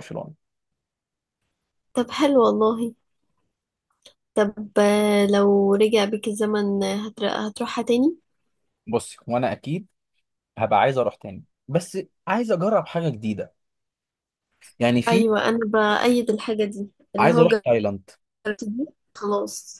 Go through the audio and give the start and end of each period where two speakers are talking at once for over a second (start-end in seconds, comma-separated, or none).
none